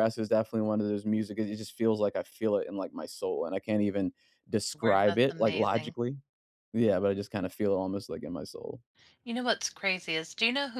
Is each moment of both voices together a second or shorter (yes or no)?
no